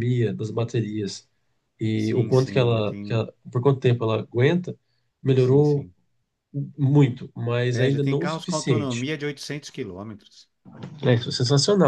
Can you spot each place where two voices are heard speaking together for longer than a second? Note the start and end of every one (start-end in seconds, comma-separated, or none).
2.0-3.3, 7.7-9.1